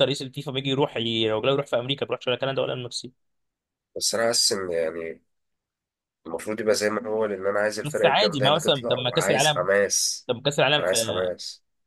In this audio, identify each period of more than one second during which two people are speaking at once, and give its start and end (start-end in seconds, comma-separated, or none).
7.8-9.7